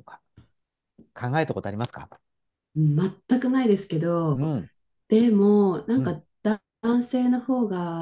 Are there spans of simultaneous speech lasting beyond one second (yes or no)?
no